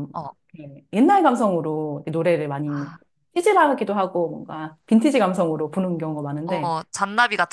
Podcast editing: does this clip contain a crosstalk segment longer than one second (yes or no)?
no